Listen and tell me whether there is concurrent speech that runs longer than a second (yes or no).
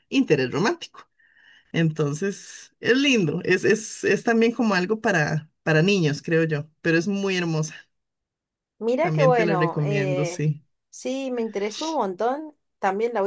yes